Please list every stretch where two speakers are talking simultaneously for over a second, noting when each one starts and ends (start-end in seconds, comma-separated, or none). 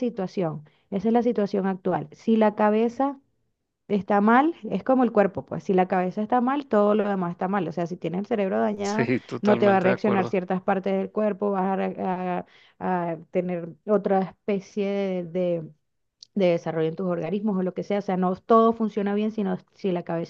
8.8-10.4